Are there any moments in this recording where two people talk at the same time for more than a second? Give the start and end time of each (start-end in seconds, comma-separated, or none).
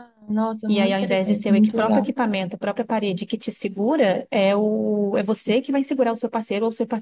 0.7-2.1